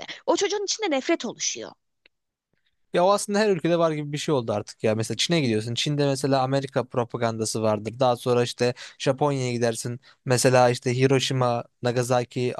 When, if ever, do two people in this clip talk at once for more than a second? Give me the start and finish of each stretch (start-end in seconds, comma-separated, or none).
none